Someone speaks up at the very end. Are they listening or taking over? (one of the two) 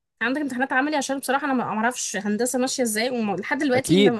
taking over